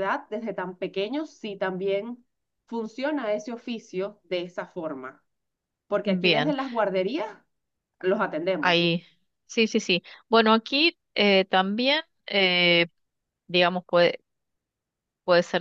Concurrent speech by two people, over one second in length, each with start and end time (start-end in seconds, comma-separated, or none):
none